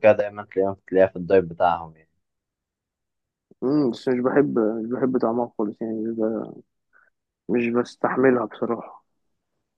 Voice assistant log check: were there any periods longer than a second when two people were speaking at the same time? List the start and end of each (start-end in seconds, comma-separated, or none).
none